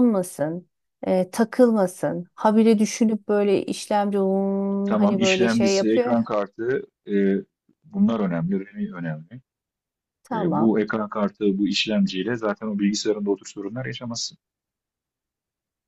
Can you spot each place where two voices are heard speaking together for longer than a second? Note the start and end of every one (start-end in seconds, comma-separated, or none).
4.8-6.2